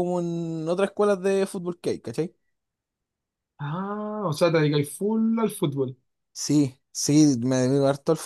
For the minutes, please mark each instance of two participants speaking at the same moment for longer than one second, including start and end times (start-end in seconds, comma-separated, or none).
none